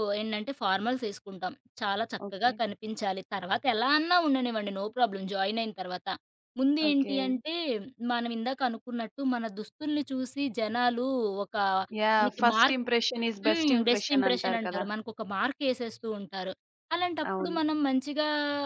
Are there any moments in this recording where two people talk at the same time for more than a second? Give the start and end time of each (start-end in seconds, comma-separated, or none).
13.5-14.8